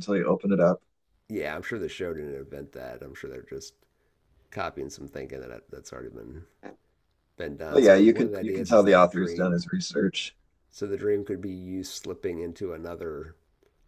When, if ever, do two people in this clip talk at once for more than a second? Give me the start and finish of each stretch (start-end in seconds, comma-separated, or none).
7.7-9.6